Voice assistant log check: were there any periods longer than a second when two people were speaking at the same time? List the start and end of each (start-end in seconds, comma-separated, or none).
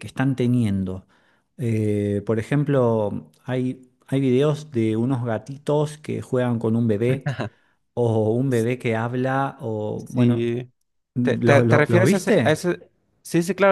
11.2-12.6